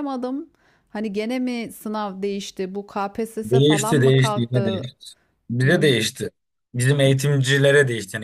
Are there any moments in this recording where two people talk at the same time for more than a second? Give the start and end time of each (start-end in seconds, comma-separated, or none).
3.5-4.8